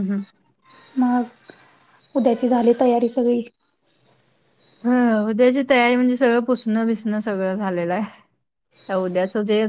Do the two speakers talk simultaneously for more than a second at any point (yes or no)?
no